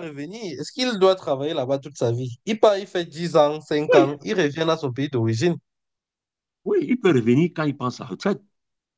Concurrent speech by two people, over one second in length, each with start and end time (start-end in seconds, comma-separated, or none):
none